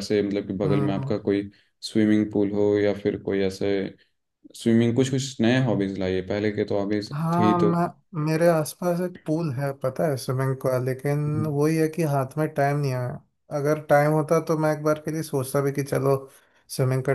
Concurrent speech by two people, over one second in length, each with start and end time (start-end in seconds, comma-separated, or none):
none